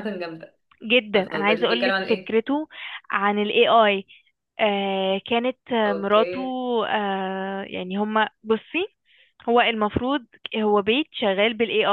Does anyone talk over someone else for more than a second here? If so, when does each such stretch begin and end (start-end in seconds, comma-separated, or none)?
1.1-2.4